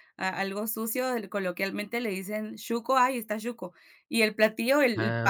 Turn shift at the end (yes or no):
no